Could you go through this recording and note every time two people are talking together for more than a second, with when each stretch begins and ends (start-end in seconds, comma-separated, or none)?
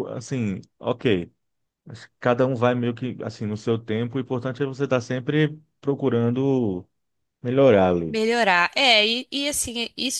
none